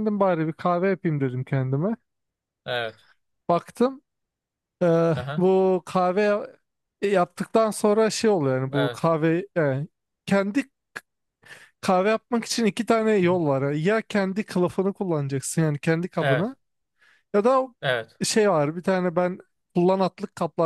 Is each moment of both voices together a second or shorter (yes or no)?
yes